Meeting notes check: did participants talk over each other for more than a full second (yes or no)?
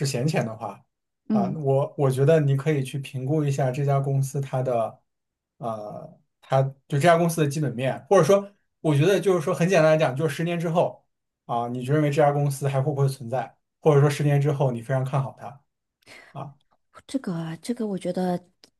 no